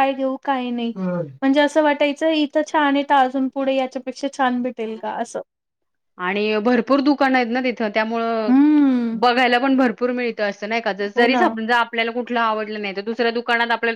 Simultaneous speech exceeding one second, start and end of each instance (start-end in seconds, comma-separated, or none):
none